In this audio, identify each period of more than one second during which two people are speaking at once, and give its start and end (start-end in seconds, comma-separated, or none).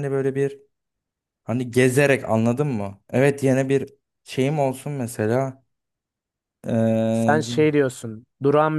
none